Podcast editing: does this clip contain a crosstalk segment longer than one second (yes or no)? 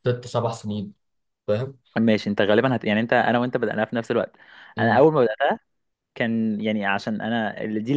no